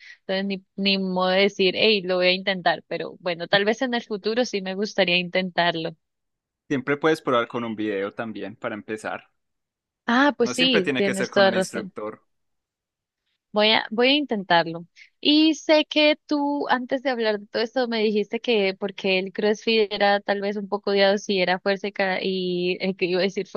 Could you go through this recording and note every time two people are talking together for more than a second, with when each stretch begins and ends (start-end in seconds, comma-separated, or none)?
10.4-11.9